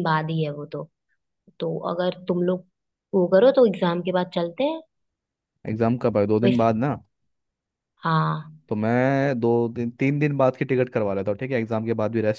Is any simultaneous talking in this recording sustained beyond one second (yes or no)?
no